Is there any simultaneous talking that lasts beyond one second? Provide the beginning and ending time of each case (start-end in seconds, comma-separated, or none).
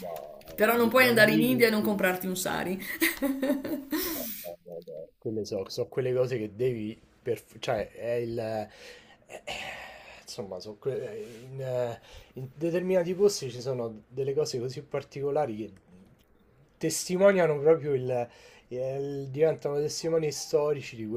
0.5-1.8